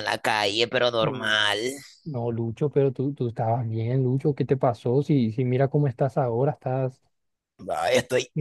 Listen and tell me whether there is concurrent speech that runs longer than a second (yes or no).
no